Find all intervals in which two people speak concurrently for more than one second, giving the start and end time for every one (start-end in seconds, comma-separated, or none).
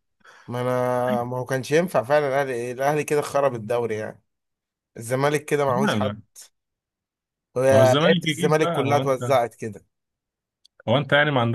8.1-9.3